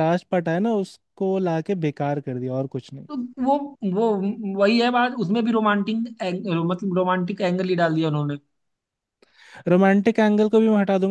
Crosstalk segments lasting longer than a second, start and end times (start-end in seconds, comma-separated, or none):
none